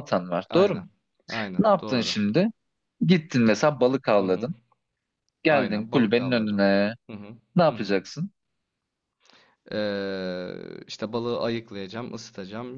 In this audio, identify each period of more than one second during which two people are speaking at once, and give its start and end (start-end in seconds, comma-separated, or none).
5.5-6.7